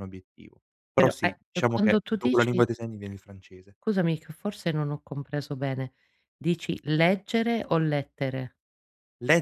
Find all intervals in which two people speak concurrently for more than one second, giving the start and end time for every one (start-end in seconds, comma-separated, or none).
1.0-2.6